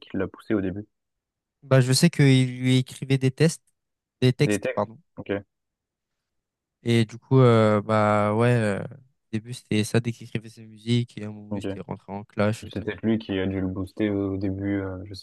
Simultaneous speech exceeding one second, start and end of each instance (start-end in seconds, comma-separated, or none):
none